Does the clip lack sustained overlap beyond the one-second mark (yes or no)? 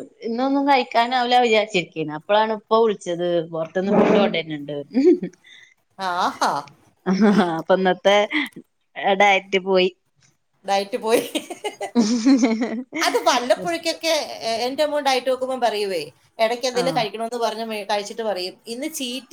yes